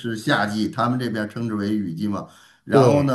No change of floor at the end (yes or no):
yes